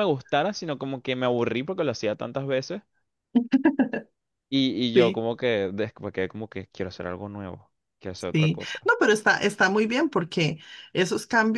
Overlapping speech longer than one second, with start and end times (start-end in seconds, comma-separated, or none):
none